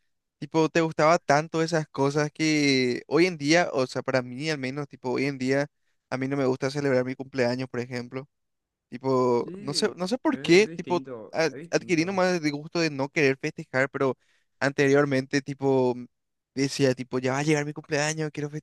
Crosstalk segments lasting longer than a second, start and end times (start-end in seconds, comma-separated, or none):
9.4-12.2